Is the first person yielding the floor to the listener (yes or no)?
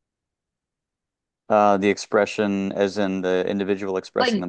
yes